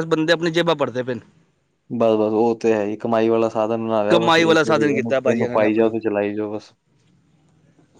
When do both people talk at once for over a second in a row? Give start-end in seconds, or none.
4.1-5.9